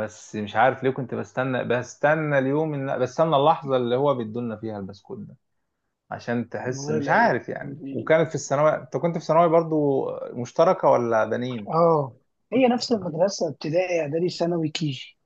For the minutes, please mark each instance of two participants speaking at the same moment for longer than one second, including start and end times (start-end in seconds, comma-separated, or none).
none